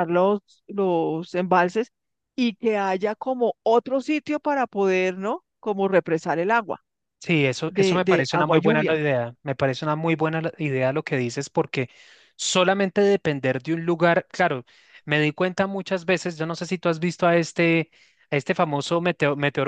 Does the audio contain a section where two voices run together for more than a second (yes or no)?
yes